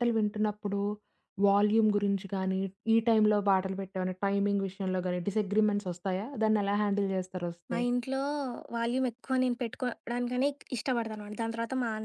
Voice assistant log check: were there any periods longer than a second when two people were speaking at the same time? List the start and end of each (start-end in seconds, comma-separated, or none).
none